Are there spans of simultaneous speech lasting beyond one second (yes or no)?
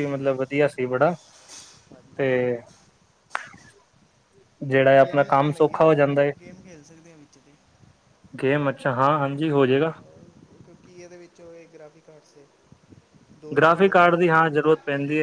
yes